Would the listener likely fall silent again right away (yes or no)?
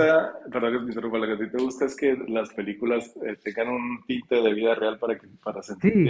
no